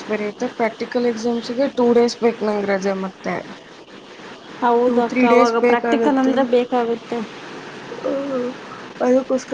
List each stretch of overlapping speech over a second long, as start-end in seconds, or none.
4.8-6.3